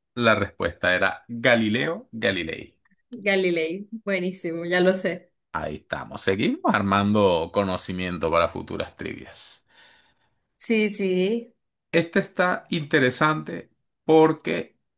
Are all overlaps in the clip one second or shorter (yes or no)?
yes